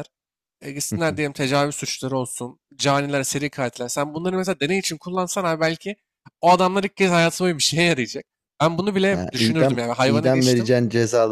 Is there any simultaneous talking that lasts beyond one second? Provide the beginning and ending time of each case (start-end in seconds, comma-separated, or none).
9.1-10.7